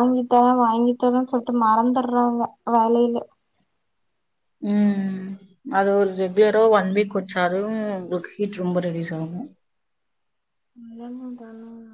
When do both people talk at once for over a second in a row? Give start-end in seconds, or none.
none